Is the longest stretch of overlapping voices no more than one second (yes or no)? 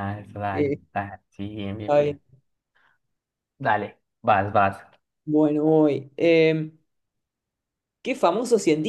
yes